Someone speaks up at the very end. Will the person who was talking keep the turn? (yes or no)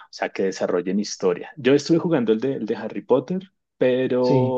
yes